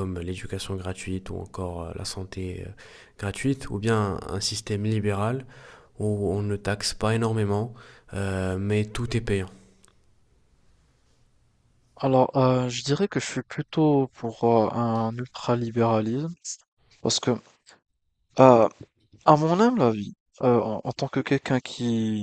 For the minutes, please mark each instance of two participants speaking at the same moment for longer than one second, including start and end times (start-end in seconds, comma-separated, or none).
none